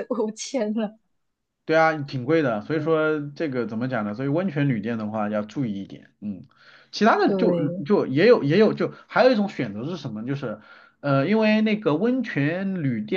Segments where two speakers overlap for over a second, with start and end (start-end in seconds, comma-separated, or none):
none